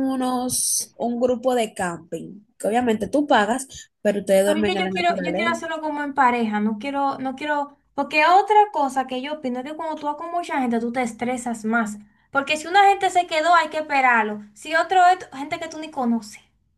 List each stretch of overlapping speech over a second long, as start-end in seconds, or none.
4.5-5.7